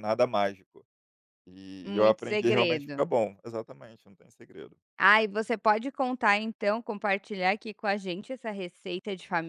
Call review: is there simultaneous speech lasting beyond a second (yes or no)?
yes